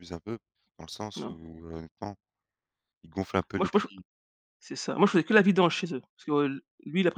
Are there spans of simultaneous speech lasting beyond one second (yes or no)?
no